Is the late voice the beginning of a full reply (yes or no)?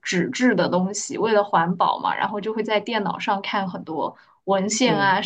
no